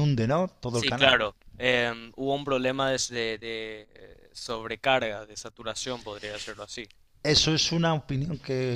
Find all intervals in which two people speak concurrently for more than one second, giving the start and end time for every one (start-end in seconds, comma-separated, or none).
none